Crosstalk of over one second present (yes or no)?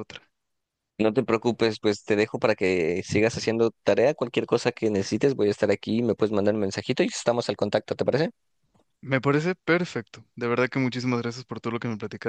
no